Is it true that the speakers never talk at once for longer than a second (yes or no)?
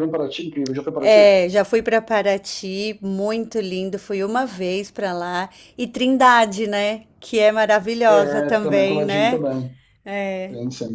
no